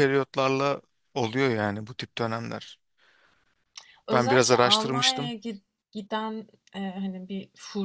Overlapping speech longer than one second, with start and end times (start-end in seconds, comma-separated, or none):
4.1-5.3